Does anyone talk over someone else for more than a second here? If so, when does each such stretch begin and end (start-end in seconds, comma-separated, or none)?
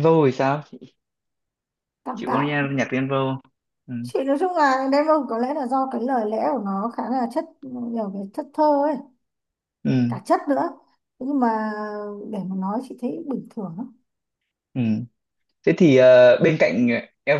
none